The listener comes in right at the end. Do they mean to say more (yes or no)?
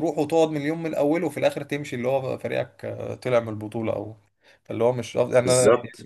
yes